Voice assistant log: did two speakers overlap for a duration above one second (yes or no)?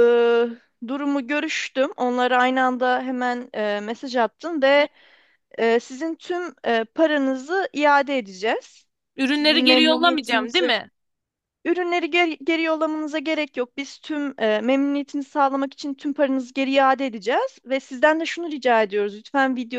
yes